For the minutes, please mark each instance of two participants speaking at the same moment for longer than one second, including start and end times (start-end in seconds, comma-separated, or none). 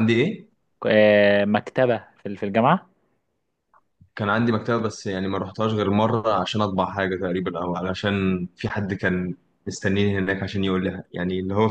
none